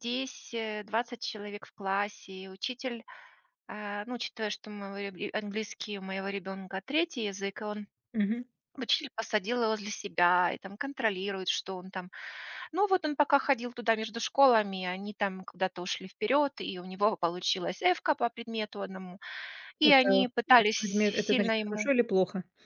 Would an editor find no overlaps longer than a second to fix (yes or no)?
no